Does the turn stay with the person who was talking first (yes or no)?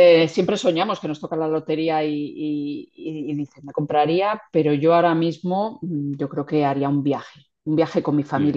yes